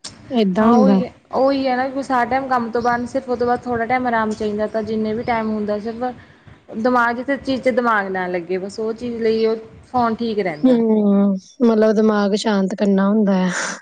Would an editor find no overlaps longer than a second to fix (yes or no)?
yes